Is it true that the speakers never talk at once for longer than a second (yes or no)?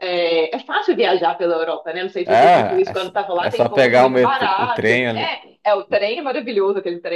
no